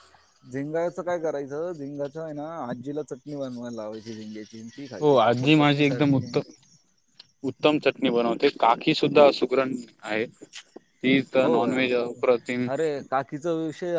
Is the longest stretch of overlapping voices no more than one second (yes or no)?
no